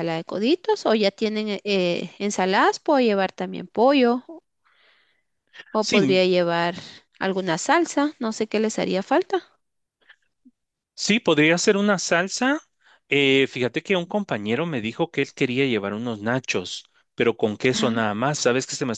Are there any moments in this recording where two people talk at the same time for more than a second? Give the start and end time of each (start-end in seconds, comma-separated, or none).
none